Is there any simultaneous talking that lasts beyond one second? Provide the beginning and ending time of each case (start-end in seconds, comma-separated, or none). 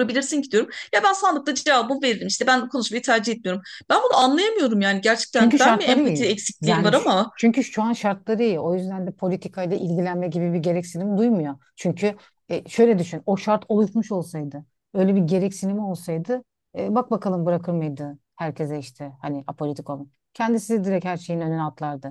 5.3-7.3